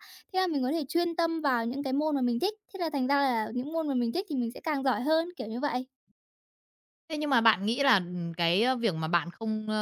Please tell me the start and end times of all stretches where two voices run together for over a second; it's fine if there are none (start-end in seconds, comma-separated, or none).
none